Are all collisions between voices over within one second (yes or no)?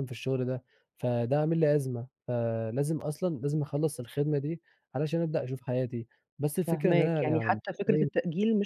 no